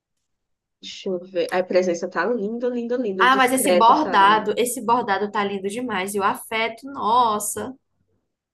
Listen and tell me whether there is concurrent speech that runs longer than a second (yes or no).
yes